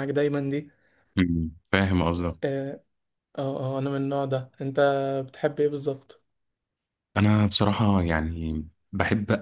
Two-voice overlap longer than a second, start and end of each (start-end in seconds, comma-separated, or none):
none